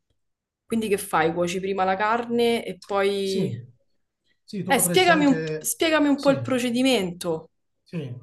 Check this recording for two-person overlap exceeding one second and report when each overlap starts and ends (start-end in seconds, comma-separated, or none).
4.7-6.3